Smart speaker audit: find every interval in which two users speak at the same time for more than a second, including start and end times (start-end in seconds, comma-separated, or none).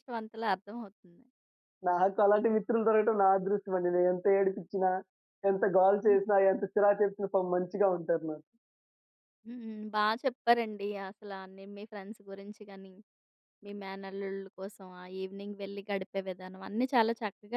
none